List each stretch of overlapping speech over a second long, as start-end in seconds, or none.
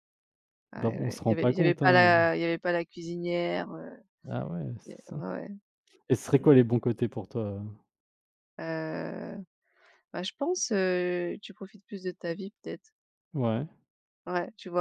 0.8-2.1